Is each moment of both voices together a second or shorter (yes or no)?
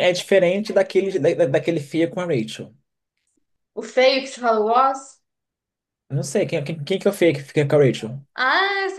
yes